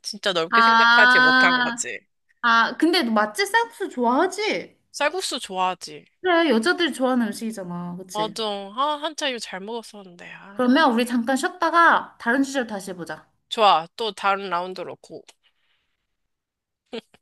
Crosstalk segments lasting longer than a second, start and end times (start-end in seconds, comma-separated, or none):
0.5-1.9